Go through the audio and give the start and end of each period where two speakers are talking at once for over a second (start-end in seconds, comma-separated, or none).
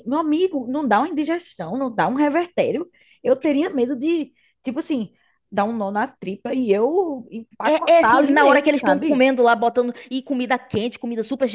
7.6-9.3